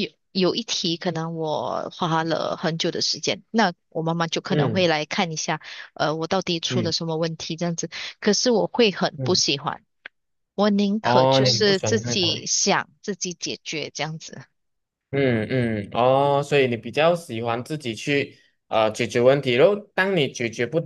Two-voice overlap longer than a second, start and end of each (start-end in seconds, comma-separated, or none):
11.0-12.4